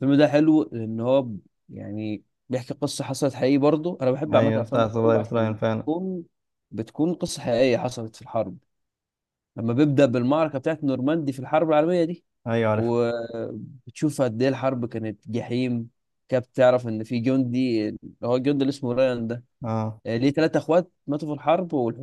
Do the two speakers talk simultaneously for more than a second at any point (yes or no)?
yes